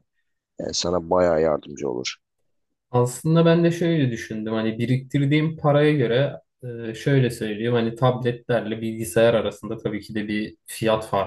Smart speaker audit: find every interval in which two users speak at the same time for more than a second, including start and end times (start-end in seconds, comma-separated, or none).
none